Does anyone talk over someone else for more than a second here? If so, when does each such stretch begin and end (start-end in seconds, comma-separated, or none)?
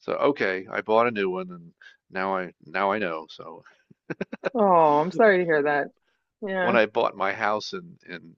none